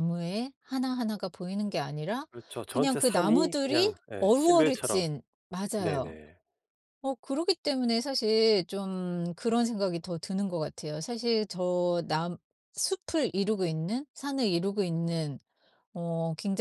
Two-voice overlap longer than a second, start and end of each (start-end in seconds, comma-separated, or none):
2.7-5.1